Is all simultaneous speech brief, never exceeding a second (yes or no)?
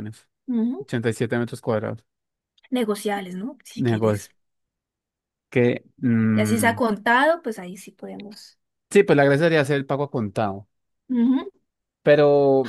yes